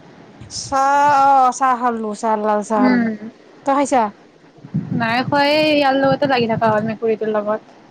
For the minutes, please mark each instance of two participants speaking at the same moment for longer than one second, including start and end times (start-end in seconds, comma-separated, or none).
none